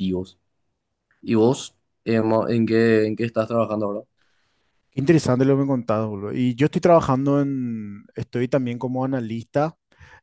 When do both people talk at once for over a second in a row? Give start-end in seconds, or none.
none